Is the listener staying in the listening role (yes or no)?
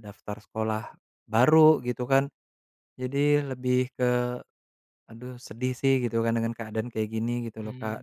no